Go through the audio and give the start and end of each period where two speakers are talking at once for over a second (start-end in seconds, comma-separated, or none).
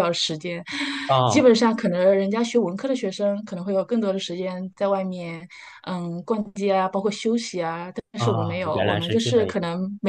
8.2-9.6